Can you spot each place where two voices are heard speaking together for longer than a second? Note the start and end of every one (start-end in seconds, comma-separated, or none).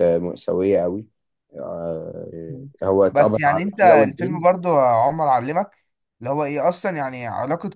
3.1-4.4